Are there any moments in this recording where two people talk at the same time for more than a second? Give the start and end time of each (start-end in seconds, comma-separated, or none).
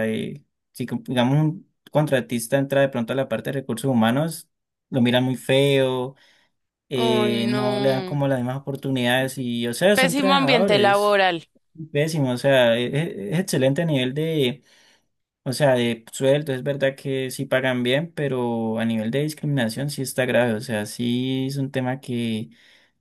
6.9-8.2, 9.9-11.2